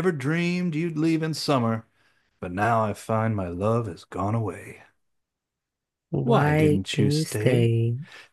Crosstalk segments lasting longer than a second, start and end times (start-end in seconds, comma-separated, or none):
6.2-7.7